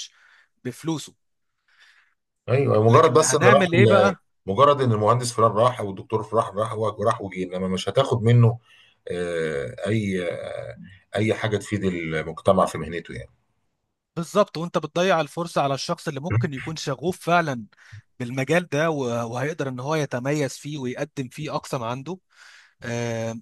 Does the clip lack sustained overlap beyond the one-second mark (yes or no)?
no